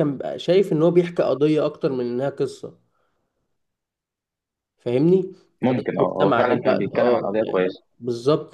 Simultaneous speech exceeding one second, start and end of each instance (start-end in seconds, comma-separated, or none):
5.7-7.8